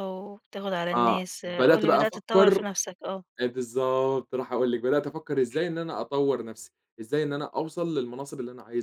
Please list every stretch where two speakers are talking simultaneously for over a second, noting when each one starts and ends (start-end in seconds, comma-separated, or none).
0.9-2.6